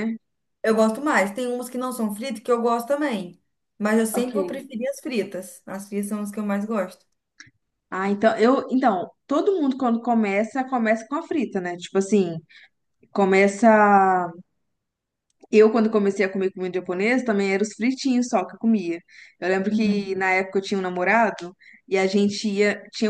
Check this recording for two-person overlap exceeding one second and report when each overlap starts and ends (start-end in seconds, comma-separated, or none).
none